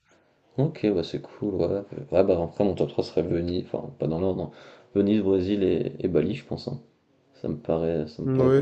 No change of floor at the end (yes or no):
no